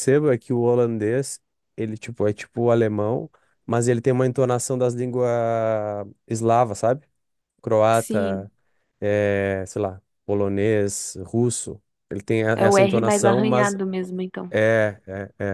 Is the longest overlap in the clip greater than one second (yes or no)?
yes